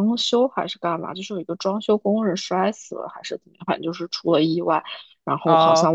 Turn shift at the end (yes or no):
no